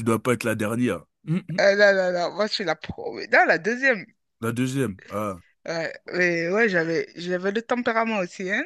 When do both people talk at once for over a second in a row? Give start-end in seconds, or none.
none